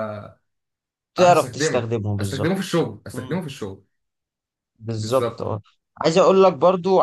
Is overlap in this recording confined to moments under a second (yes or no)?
no